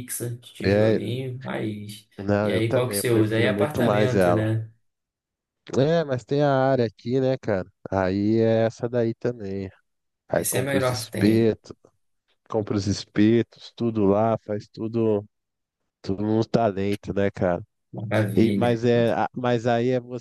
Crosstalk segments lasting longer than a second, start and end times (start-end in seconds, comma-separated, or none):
2.2-4.5, 10.3-11.6